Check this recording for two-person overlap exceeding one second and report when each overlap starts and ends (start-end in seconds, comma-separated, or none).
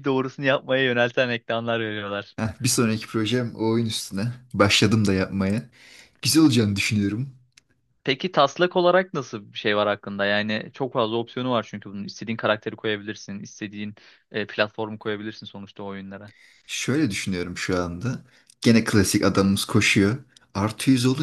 none